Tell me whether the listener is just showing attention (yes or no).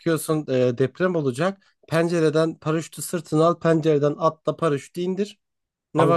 no